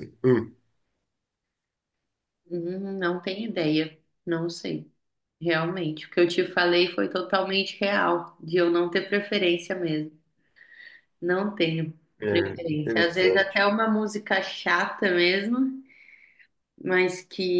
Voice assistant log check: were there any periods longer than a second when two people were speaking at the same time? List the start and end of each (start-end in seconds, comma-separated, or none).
12.2-13.7